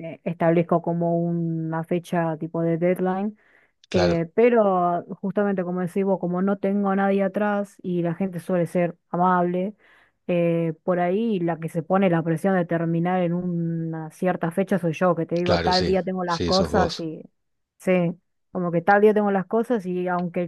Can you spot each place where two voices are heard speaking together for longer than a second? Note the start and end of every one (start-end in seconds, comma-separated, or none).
15.4-17.1